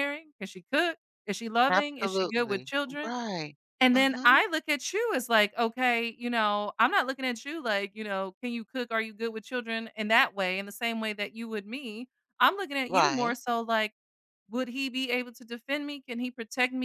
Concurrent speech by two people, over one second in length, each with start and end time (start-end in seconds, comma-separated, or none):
1.7-3.1